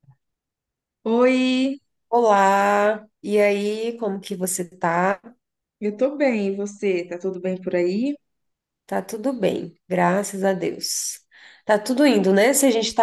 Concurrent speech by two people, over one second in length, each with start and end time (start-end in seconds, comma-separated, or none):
none